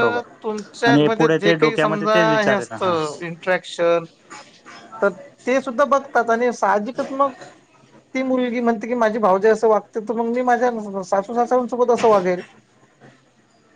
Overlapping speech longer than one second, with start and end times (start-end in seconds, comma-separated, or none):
0.9-2.8